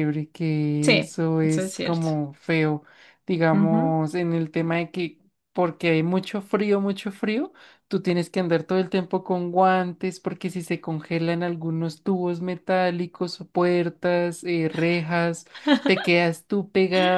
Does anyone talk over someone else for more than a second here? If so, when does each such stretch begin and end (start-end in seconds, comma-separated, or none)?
0.8-2.1